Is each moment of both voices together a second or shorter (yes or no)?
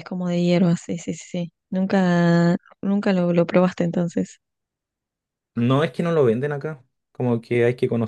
yes